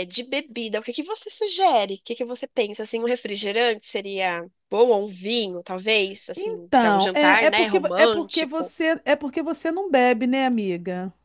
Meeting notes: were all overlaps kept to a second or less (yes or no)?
no